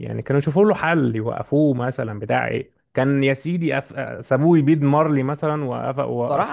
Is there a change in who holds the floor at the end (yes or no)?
yes